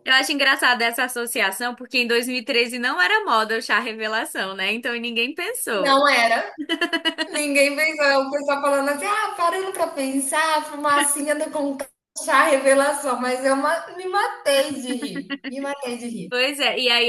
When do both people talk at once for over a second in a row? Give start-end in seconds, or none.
none